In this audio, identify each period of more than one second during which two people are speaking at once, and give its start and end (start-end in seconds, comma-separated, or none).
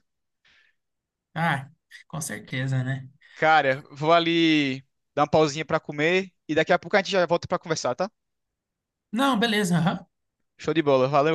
none